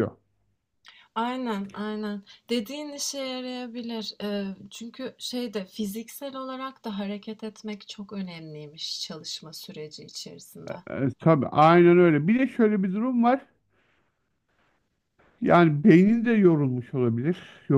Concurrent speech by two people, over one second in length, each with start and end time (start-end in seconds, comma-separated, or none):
none